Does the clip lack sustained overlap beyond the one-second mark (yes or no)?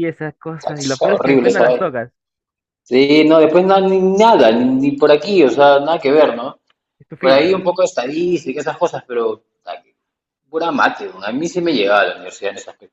no